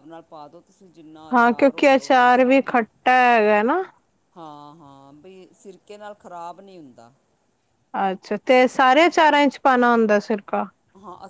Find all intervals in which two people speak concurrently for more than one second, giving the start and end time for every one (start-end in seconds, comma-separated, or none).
1.3-2.9